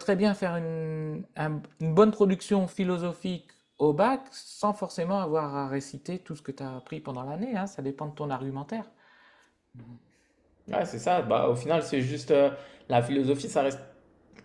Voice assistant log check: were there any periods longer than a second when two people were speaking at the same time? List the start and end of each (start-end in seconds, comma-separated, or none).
none